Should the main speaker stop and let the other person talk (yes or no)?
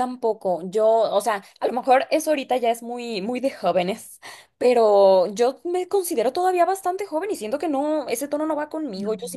no